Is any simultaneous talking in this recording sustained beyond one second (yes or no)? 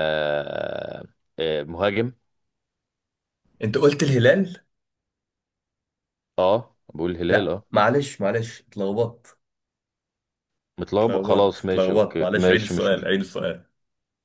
yes